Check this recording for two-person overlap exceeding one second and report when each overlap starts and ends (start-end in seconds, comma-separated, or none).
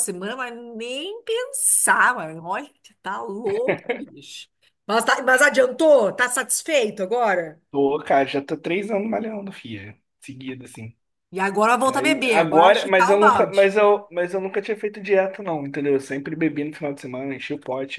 11.9-13.7